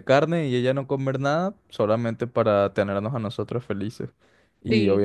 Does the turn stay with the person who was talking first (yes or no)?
yes